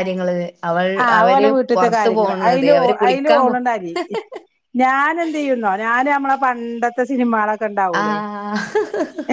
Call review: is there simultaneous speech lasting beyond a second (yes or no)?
yes